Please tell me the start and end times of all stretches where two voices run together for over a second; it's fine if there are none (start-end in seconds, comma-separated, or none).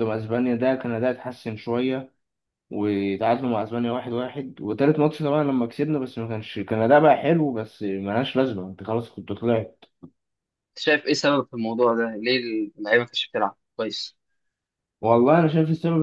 none